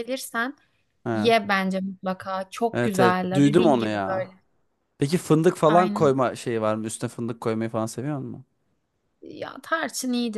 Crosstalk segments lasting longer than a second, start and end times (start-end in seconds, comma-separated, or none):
2.7-4.3